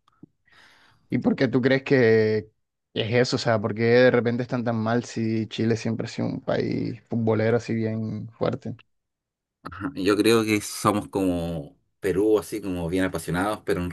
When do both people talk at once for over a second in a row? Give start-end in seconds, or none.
none